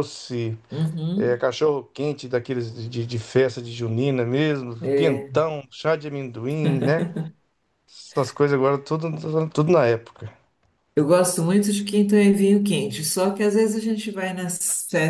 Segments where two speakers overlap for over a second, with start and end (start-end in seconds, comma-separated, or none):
none